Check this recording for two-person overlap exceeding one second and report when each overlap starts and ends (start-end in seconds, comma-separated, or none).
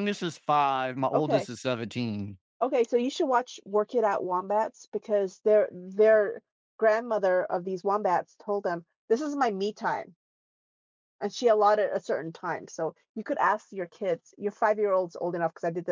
none